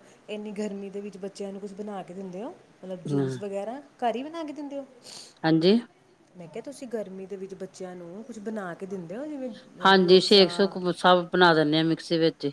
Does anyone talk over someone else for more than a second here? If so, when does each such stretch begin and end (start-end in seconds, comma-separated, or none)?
none